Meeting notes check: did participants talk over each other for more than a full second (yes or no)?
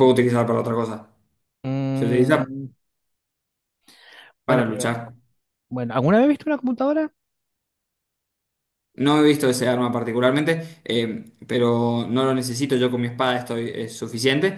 no